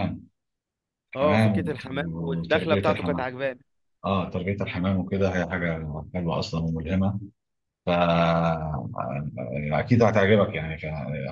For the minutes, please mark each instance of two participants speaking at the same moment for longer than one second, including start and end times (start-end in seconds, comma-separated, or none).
1.1-3.3